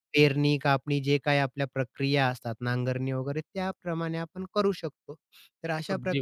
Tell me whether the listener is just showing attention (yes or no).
yes